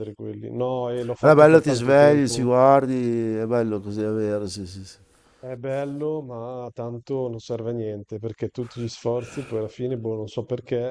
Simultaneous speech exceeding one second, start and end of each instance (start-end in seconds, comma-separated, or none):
1.2-2.5